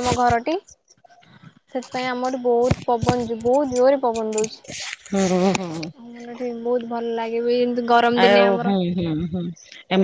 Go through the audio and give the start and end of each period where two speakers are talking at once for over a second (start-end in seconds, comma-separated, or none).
none